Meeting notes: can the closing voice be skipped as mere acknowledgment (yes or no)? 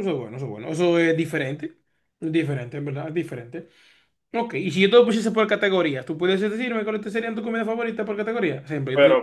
yes